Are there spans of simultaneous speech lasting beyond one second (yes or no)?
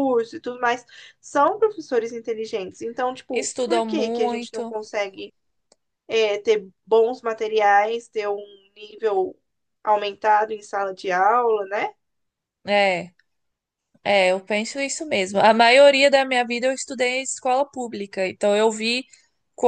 yes